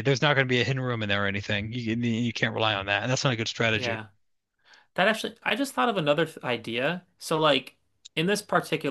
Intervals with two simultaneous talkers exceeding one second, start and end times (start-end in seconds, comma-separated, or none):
none